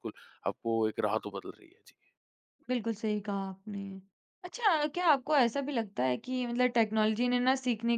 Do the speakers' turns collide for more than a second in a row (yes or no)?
no